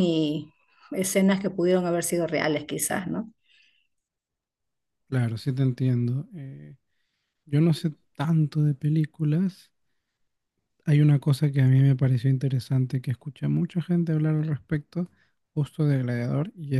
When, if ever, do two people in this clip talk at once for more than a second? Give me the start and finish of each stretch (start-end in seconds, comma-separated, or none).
none